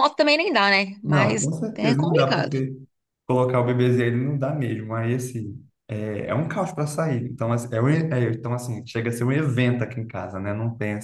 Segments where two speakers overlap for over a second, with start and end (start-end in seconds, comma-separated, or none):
1.0-2.6